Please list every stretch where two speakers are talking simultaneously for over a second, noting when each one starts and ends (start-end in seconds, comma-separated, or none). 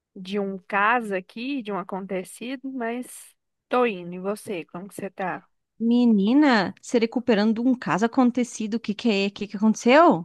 none